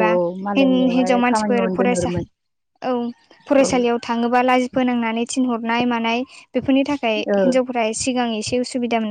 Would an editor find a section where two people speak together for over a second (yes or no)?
yes